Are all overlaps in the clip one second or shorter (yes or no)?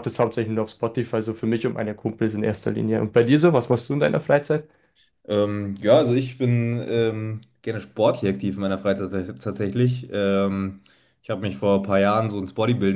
yes